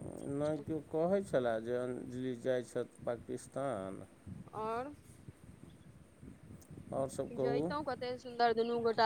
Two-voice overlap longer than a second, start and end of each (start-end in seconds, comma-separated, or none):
none